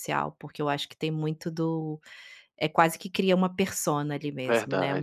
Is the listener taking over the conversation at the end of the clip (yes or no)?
no